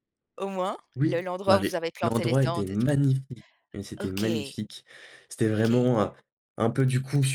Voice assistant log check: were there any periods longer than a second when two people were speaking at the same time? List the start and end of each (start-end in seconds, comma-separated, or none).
1.0-2.9